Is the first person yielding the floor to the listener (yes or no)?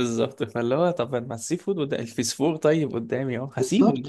yes